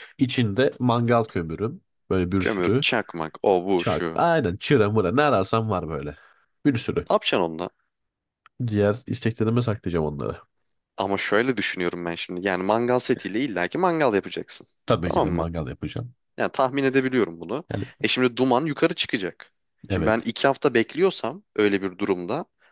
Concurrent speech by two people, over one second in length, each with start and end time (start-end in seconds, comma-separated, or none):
none